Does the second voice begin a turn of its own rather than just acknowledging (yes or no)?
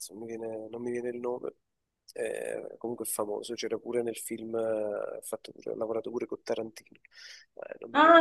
yes